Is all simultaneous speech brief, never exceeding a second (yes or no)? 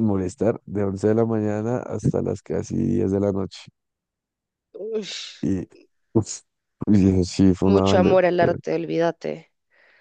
yes